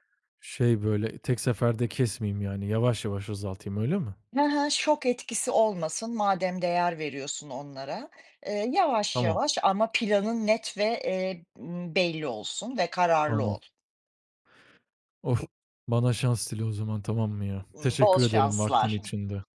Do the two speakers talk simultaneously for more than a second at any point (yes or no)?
yes